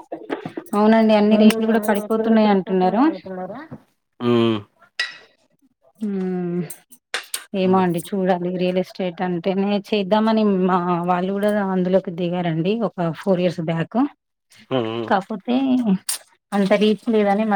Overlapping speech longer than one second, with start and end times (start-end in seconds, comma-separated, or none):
1.3-3.0